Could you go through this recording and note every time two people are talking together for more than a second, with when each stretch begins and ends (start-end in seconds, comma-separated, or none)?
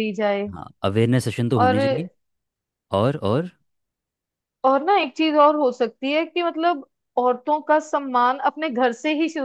none